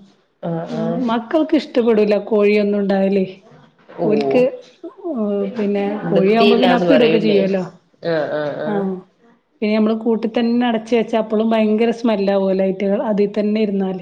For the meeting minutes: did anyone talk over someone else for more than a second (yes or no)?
yes